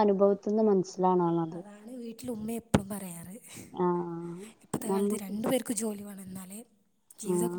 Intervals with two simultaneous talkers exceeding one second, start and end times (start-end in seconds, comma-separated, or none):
none